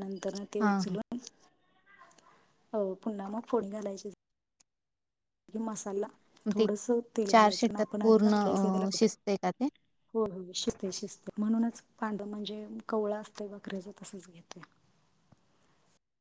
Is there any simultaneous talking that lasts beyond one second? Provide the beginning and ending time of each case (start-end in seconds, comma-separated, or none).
7.6-9.1